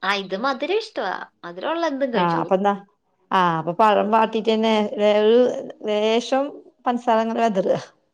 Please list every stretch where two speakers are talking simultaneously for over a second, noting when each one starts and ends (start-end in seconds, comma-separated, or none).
none